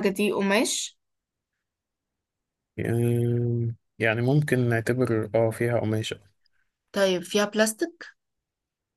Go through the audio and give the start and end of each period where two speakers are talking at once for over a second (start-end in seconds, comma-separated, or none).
none